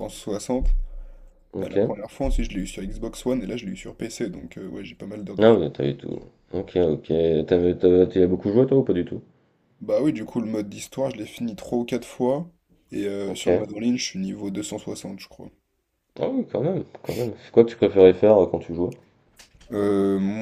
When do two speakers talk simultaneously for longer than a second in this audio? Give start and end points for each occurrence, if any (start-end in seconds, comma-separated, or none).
none